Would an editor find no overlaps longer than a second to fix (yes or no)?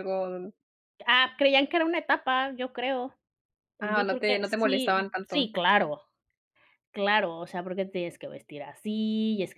no